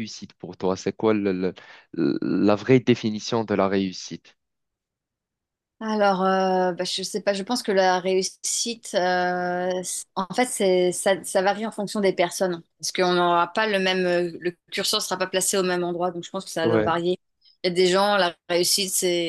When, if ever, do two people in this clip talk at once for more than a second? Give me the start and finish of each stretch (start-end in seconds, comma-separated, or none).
none